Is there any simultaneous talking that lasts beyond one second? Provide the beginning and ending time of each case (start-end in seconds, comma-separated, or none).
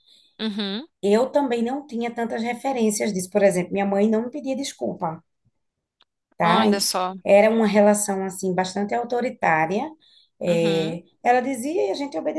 none